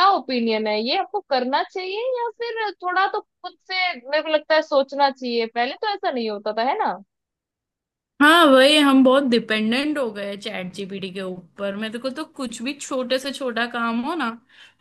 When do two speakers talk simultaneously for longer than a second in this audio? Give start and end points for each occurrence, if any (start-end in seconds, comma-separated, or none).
none